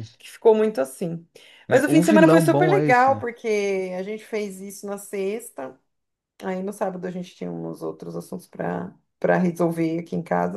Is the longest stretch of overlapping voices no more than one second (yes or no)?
no